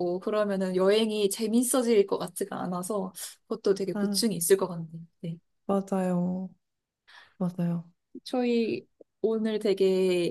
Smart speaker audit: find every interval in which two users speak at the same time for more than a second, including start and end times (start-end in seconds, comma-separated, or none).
none